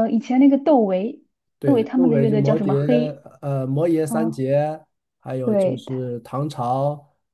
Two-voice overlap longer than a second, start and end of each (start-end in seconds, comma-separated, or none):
1.6-2.9